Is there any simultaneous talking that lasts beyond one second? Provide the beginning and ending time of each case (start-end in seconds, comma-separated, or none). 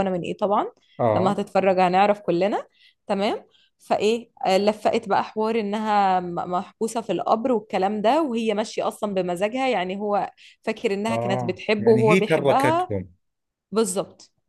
11.1-12.9